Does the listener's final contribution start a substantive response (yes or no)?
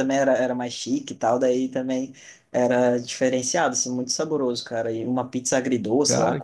no